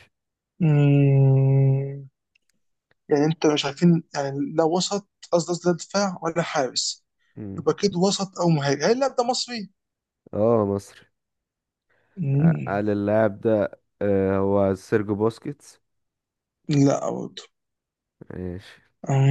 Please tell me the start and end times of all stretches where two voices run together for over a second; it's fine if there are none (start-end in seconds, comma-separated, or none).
none